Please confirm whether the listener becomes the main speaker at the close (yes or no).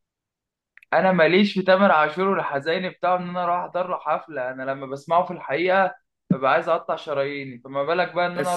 no